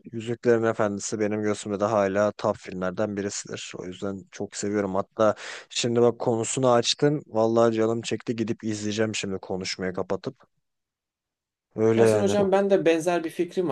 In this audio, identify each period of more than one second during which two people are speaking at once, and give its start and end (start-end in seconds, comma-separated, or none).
none